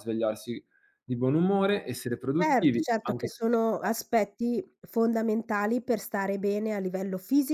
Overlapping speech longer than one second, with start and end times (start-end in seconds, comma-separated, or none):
2.4-4.0